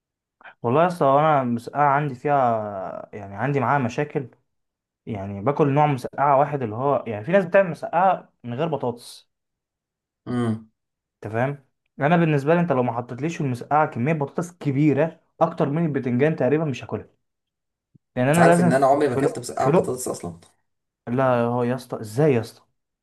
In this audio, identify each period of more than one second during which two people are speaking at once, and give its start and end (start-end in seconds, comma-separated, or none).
18.2-20.0